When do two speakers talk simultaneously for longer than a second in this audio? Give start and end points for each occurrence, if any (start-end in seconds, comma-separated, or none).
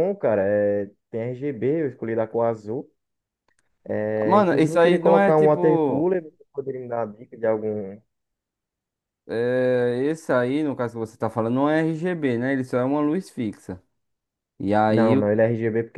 4.2-6.1